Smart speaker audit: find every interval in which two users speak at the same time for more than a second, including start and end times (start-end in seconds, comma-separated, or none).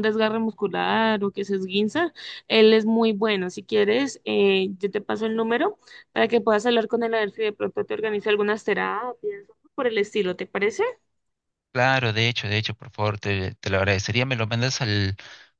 none